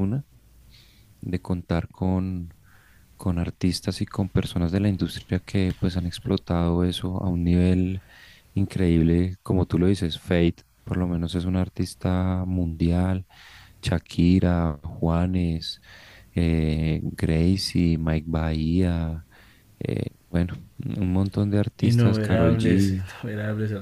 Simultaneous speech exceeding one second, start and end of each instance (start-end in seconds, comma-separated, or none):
21.8-23.1